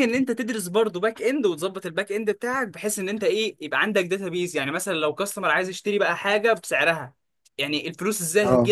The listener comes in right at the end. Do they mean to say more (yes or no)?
no